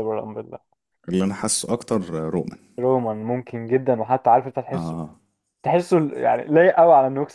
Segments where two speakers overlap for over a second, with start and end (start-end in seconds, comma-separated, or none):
none